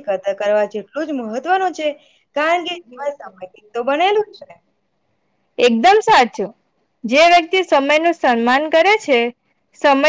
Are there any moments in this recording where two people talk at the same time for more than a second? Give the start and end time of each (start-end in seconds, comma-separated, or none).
2.7-4.3